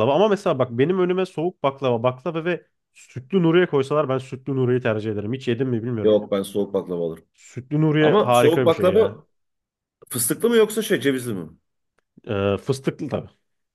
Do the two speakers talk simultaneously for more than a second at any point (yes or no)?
yes